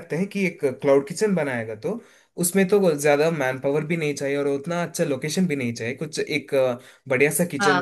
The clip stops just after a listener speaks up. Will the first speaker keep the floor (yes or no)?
yes